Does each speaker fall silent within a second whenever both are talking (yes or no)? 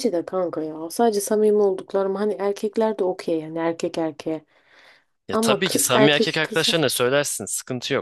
no